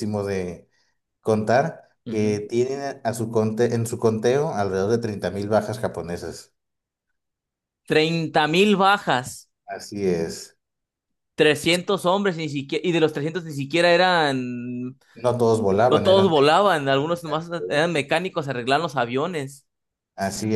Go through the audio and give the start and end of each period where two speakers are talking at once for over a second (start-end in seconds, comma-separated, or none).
15.9-17.7